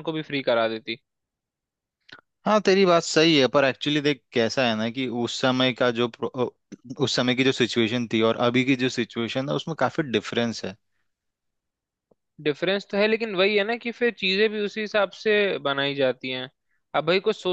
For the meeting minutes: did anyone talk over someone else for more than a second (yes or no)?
no